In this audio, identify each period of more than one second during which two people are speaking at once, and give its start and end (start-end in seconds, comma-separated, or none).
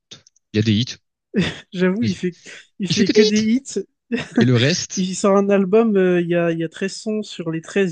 none